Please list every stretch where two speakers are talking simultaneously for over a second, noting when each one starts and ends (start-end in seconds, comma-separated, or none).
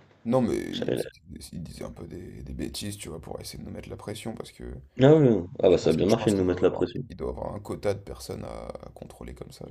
5.7-7.0